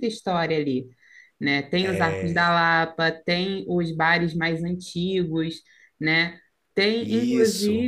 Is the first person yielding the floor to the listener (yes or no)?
no